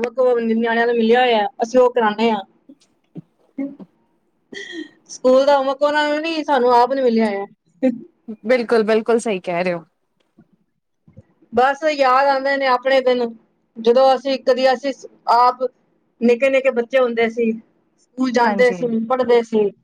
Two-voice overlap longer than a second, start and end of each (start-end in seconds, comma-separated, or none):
none